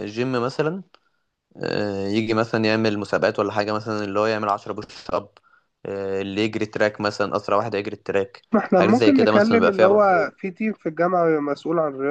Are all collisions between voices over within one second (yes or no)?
no